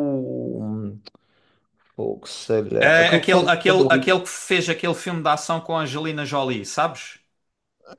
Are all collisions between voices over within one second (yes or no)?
no